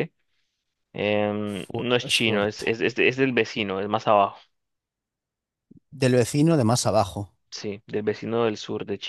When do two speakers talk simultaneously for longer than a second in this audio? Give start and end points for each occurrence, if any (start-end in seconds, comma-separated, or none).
1.4-2.8